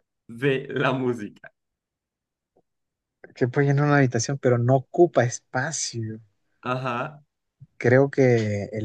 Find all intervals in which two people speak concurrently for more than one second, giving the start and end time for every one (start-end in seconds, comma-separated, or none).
none